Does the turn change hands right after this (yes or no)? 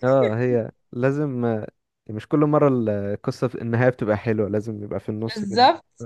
yes